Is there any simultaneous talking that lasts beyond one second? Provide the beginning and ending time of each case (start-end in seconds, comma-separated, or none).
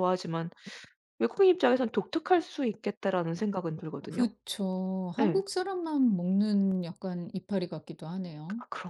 none